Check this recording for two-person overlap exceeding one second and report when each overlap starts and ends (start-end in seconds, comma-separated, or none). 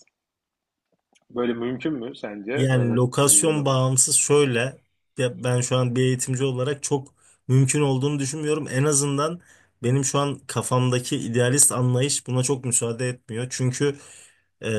2.5-3.8